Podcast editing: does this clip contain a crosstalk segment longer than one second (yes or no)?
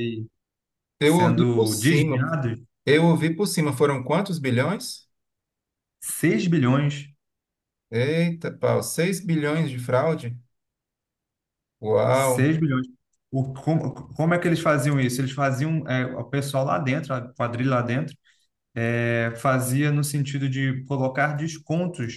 yes